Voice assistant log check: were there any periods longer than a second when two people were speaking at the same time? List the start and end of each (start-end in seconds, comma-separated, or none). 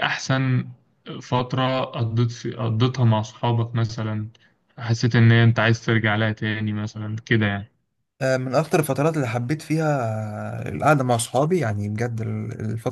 none